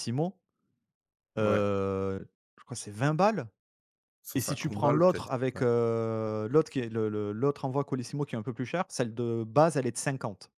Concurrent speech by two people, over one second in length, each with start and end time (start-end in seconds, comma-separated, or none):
4.3-5.6